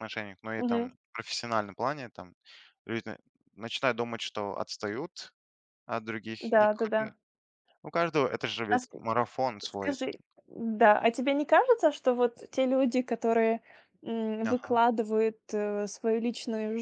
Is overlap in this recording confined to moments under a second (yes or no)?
yes